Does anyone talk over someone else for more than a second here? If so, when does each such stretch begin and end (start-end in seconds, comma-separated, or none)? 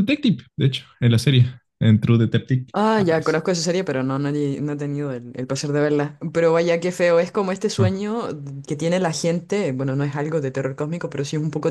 none